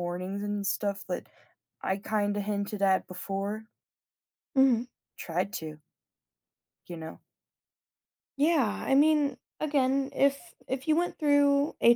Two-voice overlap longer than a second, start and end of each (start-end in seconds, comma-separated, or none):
none